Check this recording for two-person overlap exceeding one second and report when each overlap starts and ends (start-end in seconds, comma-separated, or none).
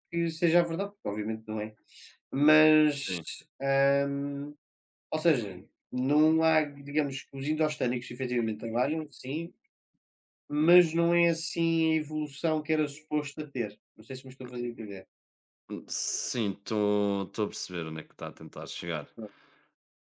none